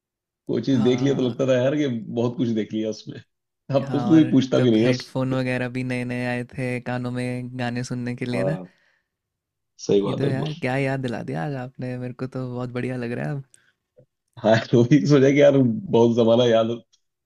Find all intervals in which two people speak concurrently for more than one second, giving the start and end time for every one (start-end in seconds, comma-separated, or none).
3.9-5.4